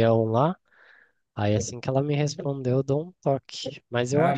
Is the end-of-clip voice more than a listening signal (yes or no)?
no